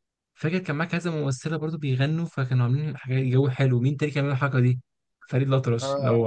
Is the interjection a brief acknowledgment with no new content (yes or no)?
no